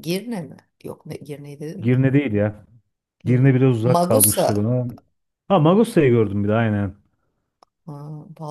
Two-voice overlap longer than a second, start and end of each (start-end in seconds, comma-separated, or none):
3.2-4.7